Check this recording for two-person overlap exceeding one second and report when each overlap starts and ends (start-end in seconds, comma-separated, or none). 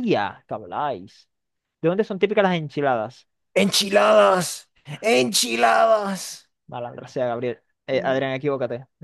none